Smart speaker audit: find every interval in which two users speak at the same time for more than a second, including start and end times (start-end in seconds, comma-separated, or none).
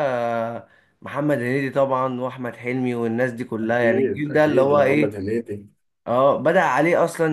3.6-5.2